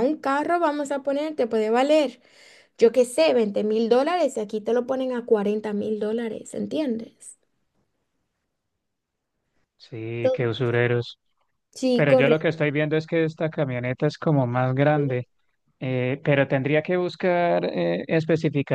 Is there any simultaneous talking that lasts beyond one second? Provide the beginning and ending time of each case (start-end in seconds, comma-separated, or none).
none